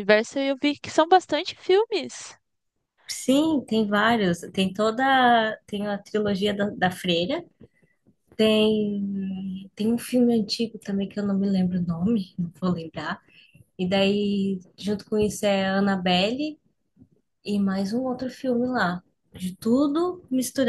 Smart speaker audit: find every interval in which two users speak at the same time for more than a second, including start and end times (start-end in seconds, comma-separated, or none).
none